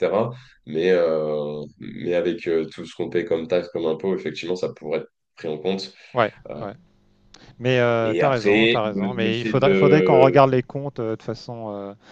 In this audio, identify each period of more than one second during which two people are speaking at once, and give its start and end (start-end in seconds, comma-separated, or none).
8.0-10.4